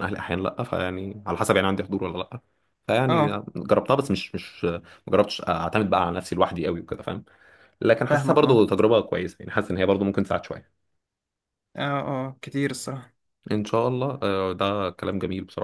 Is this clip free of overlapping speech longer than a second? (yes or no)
yes